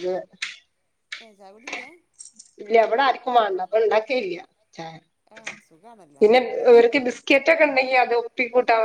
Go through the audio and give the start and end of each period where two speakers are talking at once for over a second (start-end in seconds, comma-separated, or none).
none